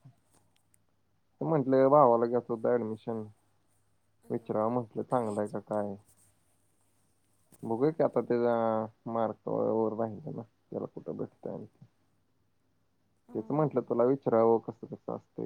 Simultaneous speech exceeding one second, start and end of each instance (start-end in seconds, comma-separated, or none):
4.3-5.8